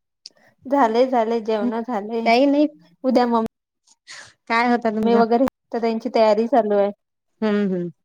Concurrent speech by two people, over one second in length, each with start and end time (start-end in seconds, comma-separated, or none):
none